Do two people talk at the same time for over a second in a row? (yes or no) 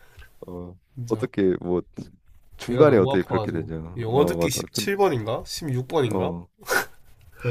yes